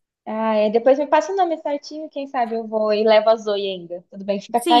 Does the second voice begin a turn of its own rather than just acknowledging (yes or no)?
yes